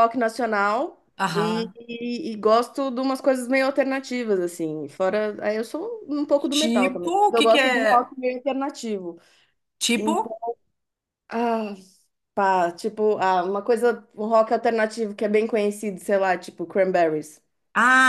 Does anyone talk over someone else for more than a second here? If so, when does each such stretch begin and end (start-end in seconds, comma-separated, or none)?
6.5-8.1